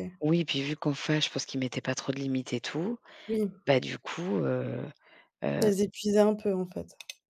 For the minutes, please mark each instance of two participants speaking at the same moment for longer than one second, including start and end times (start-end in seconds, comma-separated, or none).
none